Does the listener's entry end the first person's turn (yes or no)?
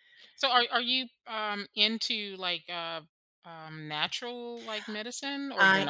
yes